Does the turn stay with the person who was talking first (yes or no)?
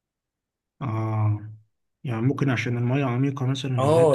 no